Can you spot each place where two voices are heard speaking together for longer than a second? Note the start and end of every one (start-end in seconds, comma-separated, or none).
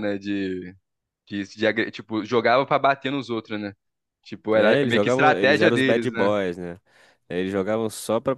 4.5-6.3